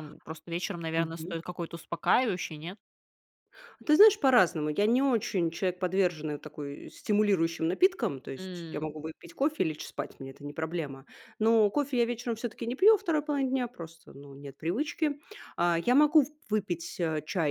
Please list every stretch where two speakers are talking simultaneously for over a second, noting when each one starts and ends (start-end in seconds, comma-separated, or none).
none